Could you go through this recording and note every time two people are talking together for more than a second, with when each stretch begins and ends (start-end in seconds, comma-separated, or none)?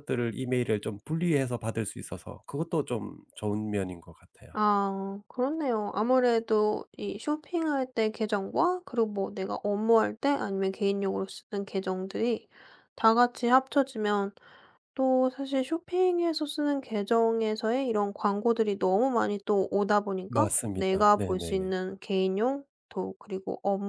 20.3-21.7